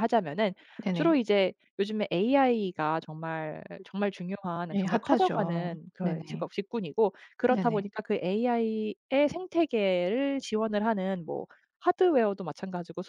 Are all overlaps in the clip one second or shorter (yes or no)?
no